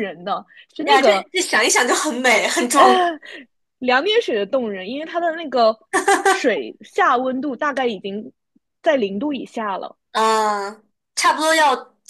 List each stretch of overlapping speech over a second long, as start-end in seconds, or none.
none